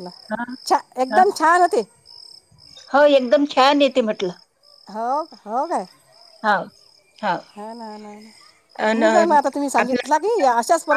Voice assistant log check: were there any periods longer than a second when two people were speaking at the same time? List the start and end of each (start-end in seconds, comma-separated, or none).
8.9-10.4